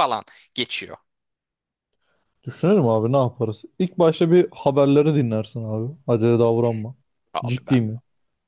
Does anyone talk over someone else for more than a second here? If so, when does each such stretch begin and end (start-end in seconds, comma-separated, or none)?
none